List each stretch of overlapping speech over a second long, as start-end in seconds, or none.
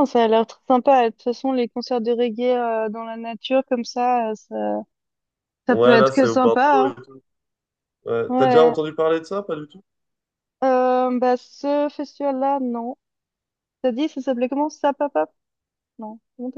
5.7-6.9